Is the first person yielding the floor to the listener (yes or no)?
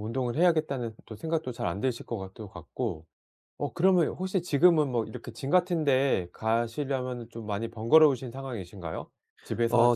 yes